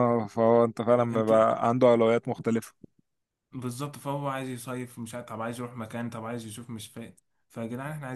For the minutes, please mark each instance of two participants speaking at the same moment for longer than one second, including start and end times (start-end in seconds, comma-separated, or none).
none